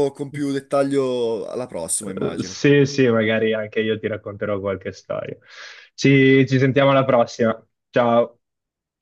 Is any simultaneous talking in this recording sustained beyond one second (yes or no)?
no